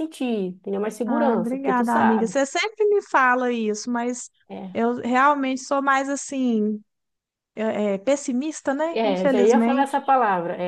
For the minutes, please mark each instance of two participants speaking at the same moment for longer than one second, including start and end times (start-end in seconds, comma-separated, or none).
1.0-2.4, 8.9-10.1